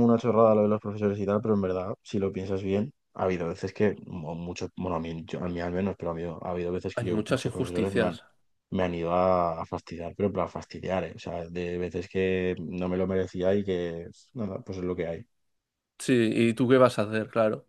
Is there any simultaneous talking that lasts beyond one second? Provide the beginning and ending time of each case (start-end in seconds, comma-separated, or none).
6.9-8.2